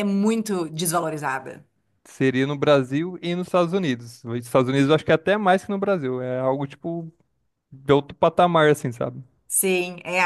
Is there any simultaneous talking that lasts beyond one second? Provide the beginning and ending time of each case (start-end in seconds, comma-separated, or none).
none